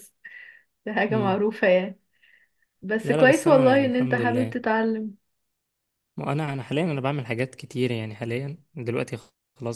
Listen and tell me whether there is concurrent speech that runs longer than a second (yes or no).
yes